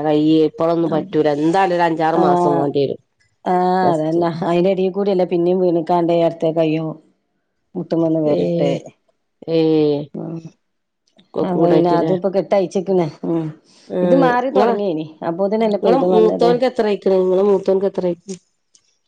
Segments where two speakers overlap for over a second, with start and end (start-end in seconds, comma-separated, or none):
14.6-16.5